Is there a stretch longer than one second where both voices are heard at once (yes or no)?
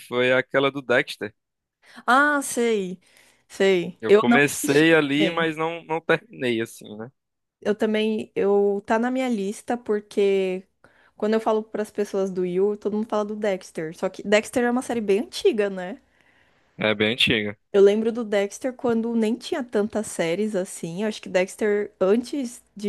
yes